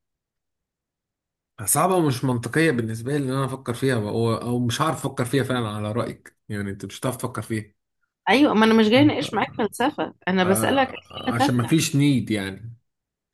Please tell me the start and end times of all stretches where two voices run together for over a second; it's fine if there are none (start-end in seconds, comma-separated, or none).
10.4-11.7